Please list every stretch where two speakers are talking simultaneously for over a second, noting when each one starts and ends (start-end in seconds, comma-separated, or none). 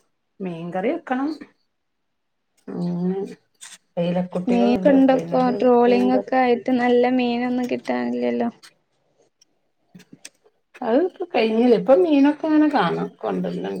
4.5-6.3